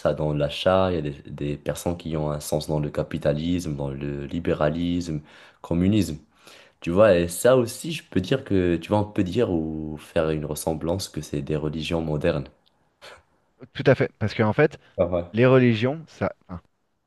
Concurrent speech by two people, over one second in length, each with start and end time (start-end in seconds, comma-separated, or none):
none